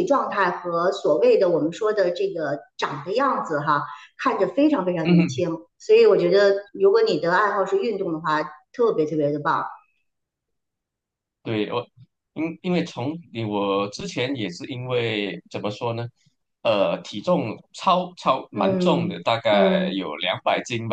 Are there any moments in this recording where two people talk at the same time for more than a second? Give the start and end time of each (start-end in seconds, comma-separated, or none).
18.5-20.0